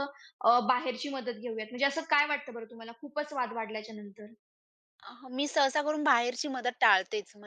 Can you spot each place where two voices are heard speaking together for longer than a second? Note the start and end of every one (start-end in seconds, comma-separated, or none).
none